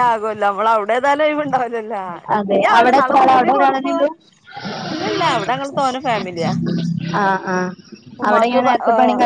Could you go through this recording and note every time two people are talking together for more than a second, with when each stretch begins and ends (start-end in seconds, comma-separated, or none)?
2.4-4.0